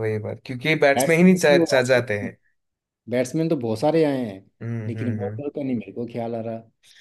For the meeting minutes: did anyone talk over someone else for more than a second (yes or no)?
yes